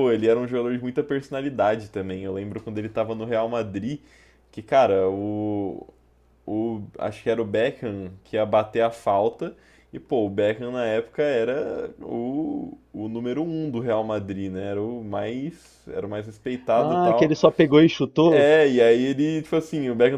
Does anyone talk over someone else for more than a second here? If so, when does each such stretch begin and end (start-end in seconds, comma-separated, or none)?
none